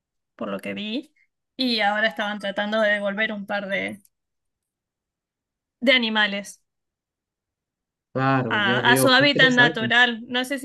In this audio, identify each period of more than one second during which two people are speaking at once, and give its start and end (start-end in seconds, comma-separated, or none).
8.5-9.9